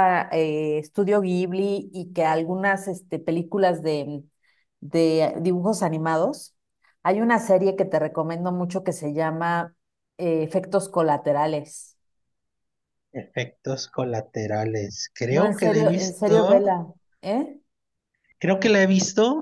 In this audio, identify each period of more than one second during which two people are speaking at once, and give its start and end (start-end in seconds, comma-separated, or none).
15.3-16.9